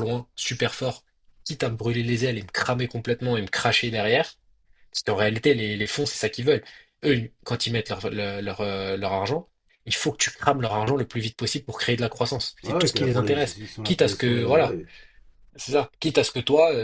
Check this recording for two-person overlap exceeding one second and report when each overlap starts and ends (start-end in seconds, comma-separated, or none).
12.6-14.8